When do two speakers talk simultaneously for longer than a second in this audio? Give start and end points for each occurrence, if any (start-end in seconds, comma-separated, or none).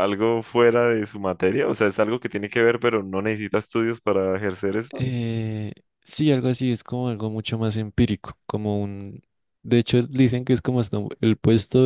none